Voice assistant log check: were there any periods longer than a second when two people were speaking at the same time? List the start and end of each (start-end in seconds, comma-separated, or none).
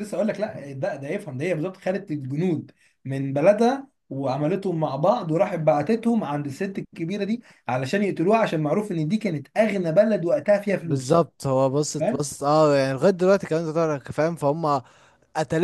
none